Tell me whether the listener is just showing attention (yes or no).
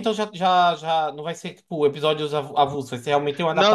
no